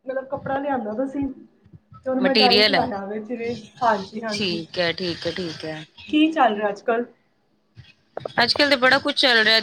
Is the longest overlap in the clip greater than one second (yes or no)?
no